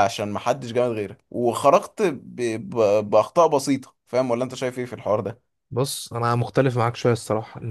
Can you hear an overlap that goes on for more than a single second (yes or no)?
no